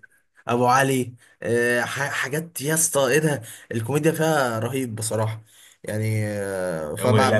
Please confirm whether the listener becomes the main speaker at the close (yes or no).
yes